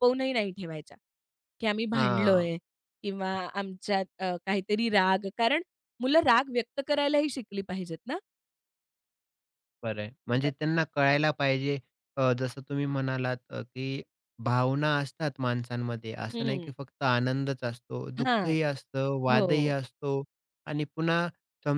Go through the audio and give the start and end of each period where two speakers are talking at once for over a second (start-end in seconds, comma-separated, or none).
none